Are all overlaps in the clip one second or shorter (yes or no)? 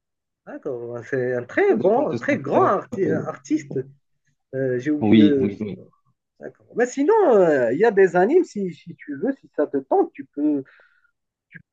no